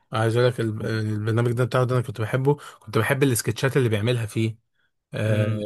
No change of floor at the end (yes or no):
no